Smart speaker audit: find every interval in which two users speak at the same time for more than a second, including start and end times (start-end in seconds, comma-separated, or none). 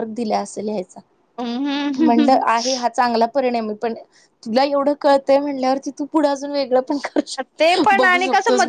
none